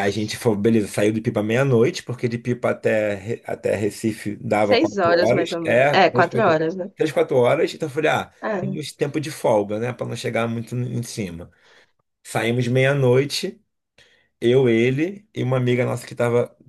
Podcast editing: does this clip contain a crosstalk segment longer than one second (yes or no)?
yes